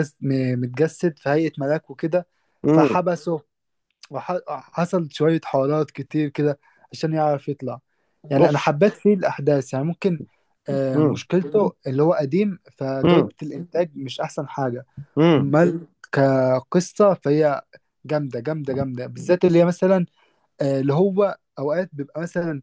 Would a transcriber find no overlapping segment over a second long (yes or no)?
yes